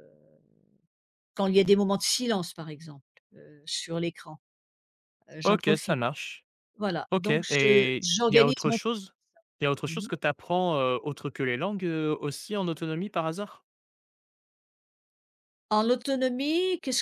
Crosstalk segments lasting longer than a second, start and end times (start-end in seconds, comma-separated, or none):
7.1-8.8